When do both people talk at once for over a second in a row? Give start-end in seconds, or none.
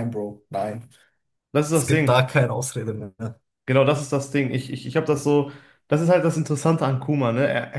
none